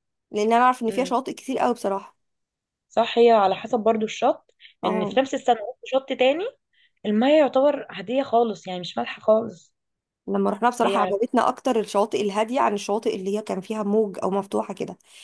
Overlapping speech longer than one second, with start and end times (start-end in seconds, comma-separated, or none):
none